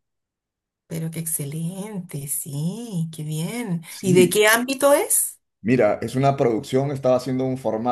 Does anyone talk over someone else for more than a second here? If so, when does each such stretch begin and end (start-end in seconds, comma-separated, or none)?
none